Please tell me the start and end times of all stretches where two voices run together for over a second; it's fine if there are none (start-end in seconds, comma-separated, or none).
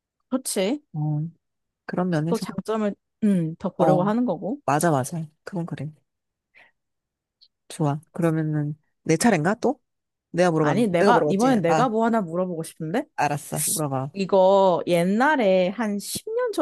10.6-11.9